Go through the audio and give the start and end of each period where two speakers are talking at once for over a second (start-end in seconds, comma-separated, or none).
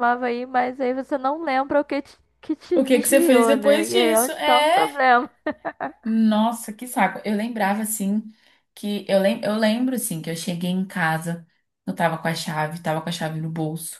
2.7-4.9